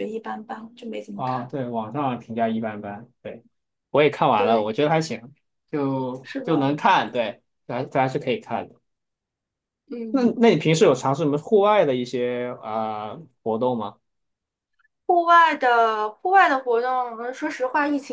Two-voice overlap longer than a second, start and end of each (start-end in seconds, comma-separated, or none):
none